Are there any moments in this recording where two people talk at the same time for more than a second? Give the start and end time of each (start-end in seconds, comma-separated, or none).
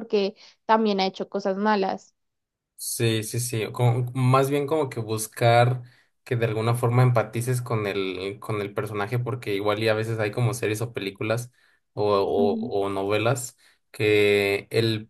none